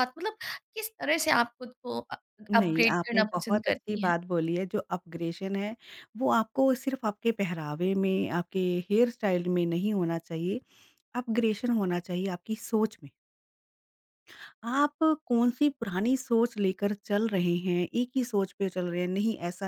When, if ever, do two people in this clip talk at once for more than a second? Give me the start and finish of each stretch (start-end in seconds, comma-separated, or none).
2.5-4.1